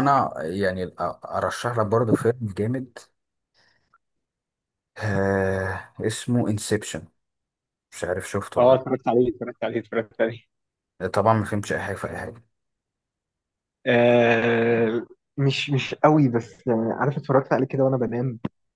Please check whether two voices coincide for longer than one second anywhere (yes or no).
no